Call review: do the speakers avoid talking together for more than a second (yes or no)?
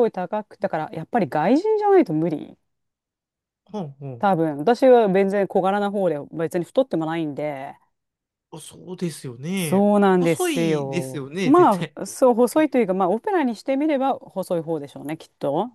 no